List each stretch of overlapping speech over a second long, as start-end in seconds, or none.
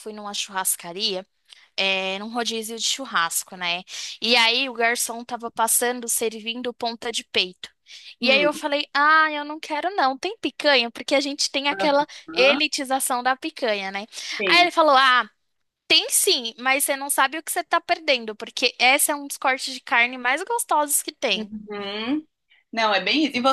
none